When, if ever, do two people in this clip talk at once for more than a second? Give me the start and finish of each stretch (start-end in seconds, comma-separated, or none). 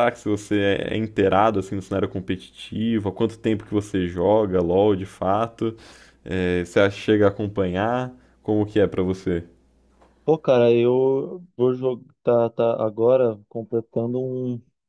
none